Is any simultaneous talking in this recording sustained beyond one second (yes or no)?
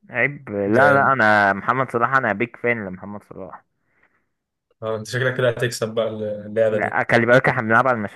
no